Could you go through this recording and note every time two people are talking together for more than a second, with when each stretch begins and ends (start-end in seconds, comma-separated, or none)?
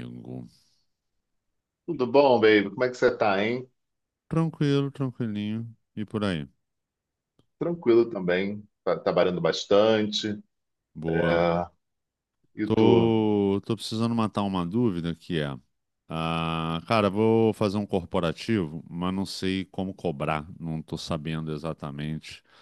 none